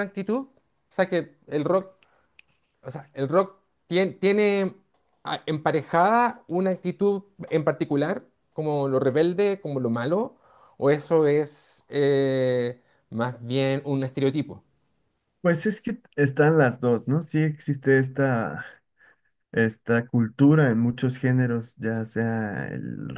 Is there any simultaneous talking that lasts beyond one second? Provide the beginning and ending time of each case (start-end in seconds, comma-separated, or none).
none